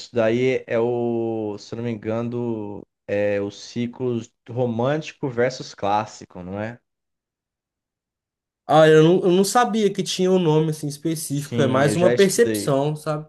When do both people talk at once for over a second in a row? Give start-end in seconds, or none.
11.3-12.8